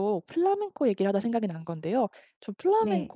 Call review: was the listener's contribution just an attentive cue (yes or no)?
yes